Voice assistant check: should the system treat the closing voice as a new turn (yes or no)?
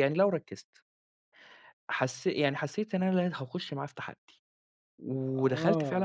yes